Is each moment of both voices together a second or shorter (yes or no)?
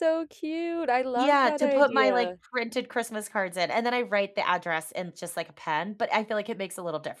no